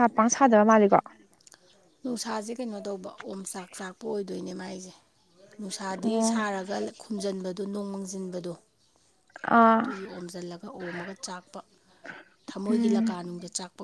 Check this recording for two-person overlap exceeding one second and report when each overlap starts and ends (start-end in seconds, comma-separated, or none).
none